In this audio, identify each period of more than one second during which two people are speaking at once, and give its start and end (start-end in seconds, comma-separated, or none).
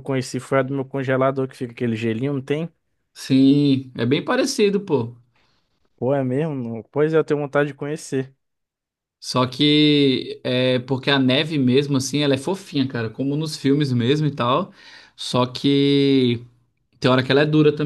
none